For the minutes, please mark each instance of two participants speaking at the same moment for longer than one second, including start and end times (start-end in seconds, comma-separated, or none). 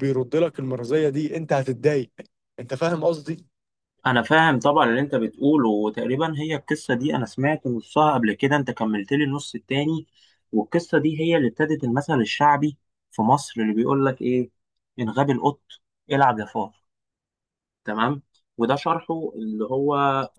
none